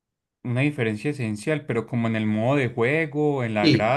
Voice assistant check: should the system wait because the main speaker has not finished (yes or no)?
no